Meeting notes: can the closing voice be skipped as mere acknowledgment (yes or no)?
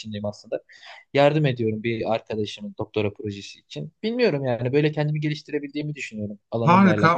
no